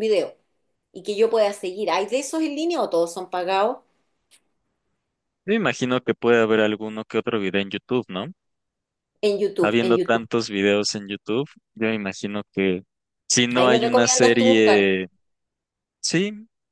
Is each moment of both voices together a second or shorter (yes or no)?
no